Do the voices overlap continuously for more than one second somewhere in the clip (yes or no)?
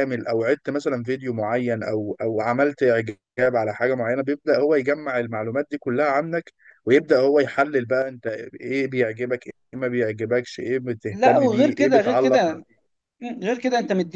yes